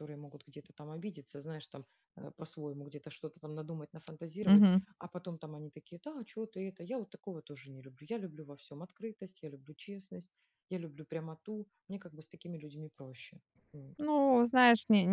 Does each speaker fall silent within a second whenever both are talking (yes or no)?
yes